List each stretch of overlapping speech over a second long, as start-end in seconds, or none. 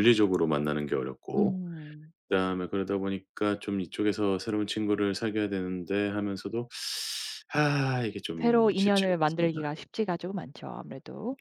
8.4-9.6